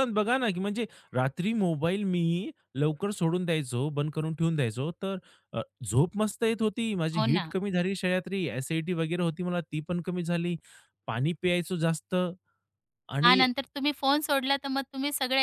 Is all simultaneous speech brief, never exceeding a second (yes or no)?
yes